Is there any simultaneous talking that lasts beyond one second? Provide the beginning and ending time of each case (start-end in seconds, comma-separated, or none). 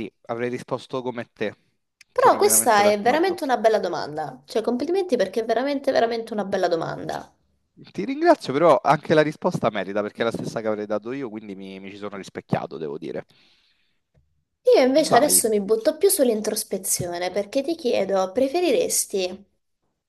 2.1-3.4